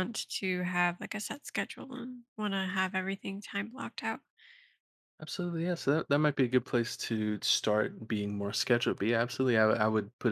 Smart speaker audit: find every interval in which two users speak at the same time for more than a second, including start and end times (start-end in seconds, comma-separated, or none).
none